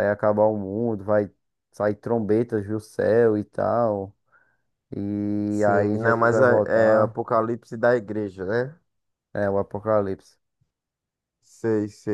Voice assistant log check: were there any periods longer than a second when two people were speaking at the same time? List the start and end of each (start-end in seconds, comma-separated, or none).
5.5-7.2